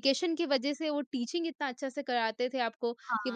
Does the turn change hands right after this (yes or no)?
no